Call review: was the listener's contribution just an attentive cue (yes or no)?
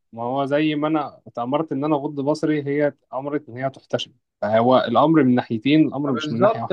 no